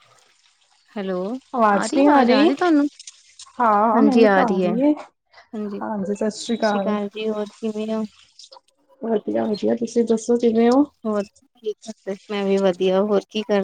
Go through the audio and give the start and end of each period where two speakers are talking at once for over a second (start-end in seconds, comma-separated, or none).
none